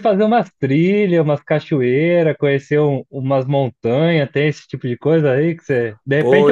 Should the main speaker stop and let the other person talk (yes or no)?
no